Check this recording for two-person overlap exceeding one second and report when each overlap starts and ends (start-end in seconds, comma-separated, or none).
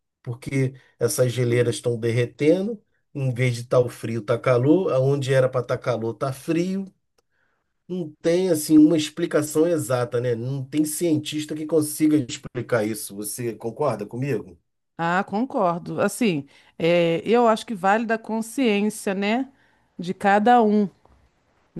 none